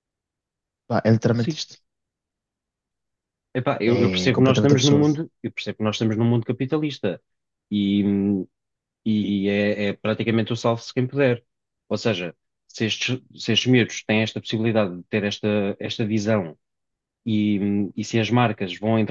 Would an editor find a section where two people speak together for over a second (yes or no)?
yes